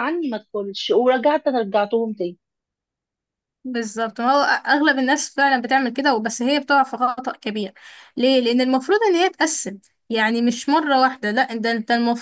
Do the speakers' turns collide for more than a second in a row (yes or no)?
no